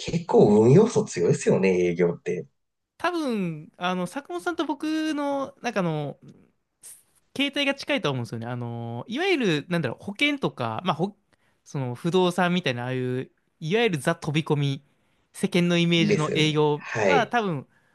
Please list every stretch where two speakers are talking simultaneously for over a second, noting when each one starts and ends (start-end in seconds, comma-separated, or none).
16.0-17.4